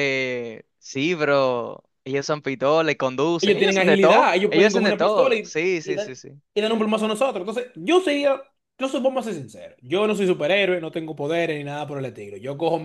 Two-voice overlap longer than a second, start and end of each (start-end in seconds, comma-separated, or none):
3.4-6.1